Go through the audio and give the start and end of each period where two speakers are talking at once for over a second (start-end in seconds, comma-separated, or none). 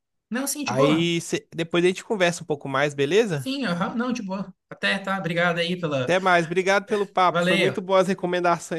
none